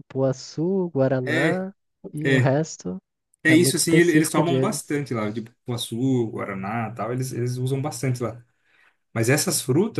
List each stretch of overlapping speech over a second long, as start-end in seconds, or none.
3.5-5.0